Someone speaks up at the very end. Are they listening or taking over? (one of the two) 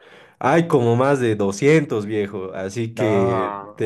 listening